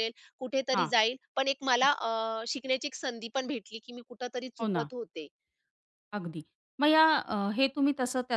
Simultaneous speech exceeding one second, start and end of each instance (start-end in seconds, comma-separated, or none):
none